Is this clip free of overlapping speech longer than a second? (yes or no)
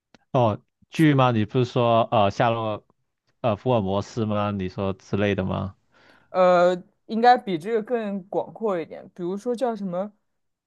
yes